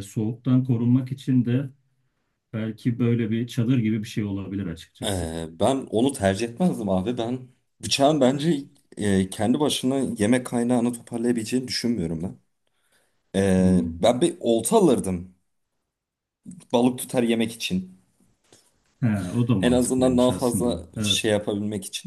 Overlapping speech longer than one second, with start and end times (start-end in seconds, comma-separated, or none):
19.6-21.3